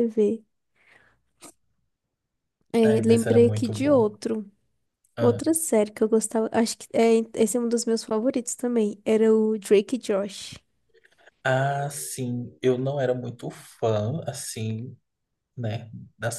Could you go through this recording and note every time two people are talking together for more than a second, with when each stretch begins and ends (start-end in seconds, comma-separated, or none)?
2.8-4.1